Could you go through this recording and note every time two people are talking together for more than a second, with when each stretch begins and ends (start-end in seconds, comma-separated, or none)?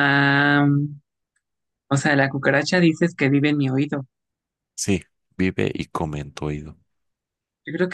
none